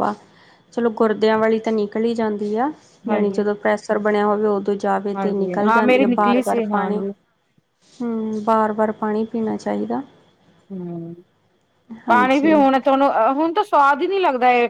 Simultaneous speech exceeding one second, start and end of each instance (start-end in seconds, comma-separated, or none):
5.1-7.0